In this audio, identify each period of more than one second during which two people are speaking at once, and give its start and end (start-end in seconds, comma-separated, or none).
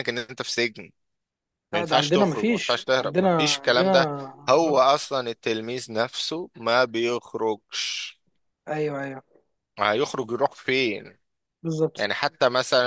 1.7-3.9